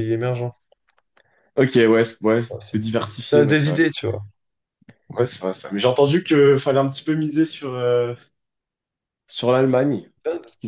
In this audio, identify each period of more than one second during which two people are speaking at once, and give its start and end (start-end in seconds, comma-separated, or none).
2.5-3.8